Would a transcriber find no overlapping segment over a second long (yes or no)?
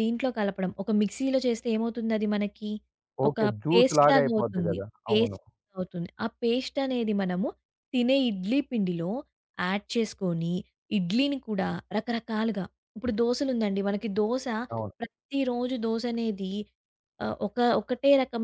no